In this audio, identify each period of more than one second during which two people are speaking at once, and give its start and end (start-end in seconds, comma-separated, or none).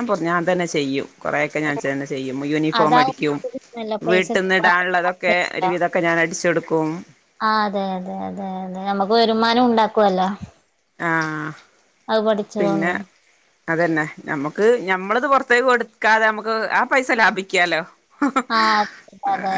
4.1-5.7